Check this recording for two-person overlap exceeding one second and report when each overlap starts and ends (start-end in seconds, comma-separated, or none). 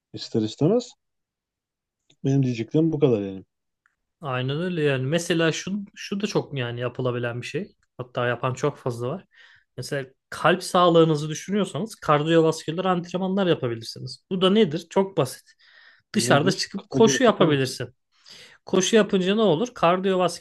16.1-17.8